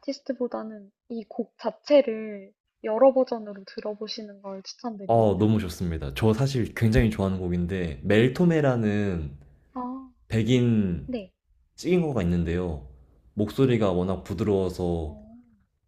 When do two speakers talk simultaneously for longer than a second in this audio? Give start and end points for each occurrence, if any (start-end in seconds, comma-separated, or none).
none